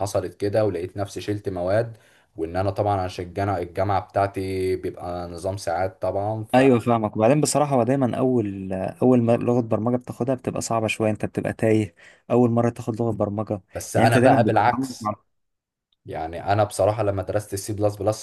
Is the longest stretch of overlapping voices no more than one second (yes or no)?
no